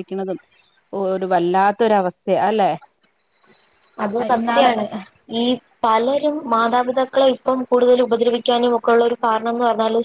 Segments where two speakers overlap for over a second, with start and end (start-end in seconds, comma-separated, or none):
none